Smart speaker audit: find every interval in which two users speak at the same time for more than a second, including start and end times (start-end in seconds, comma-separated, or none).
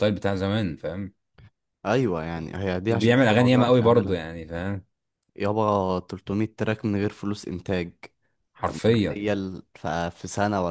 2.9-4.2